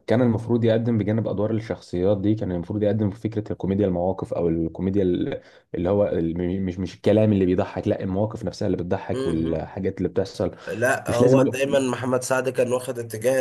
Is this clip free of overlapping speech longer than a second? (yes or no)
yes